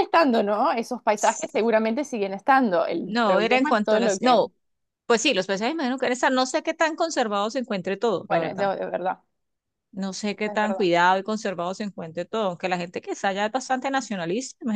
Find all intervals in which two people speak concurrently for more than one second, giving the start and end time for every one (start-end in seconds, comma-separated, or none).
3.0-4.4